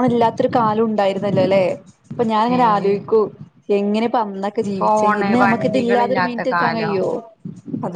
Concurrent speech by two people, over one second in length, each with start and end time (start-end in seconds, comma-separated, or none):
4.8-7.0